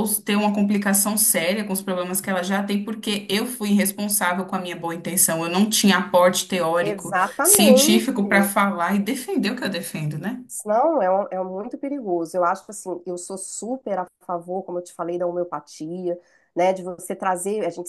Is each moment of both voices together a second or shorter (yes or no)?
no